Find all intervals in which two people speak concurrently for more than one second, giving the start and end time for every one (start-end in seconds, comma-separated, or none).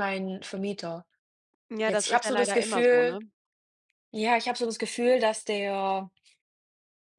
1.8-3.2